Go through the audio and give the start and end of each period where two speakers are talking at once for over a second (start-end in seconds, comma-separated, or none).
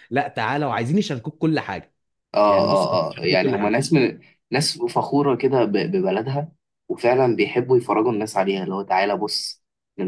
2.5-3.9